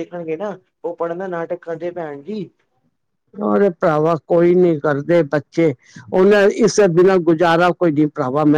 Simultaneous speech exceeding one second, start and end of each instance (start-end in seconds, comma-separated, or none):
none